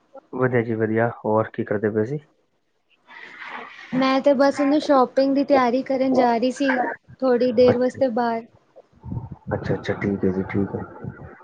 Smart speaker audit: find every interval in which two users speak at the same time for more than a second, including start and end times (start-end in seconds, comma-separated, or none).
none